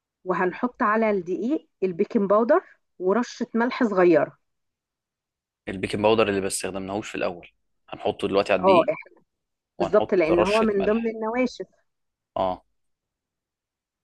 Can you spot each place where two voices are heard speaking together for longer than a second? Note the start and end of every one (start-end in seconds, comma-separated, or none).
9.8-11.2